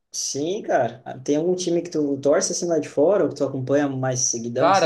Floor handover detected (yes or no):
yes